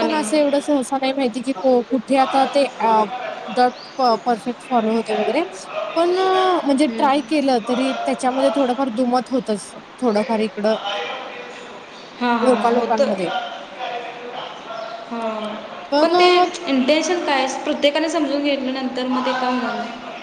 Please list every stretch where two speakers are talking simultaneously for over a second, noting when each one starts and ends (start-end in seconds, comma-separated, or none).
none